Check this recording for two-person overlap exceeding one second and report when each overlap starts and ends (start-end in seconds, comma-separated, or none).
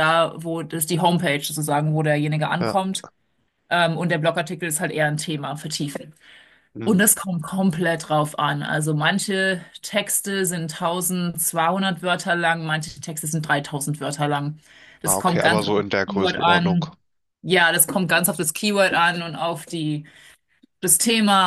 15.1-16.8